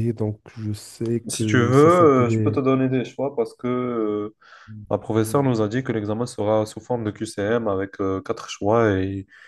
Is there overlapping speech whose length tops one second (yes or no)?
yes